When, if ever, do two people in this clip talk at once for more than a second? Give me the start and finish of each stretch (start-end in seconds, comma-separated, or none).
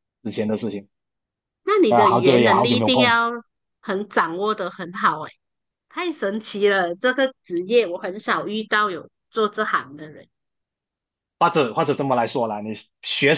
1.9-3.2